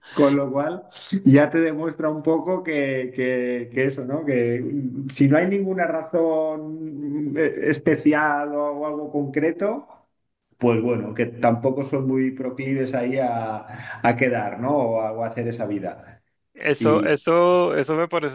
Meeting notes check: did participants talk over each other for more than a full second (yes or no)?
no